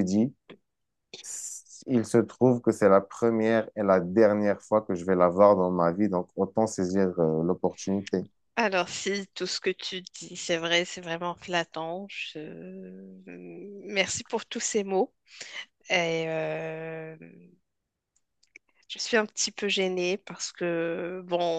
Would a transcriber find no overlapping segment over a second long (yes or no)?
yes